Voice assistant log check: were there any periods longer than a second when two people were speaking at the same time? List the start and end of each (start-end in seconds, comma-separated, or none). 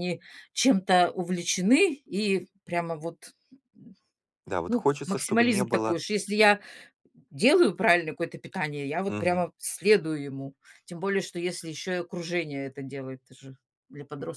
4.7-6.0